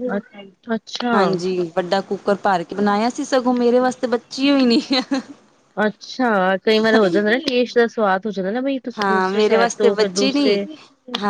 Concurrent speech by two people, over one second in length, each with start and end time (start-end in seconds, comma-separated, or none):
9.0-10.6